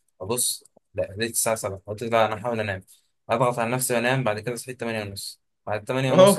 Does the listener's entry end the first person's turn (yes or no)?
no